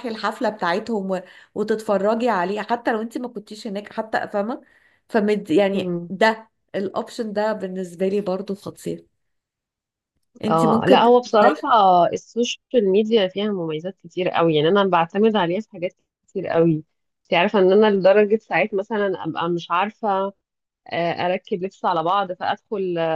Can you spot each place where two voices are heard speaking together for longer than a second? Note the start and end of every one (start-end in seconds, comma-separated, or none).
10.5-11.7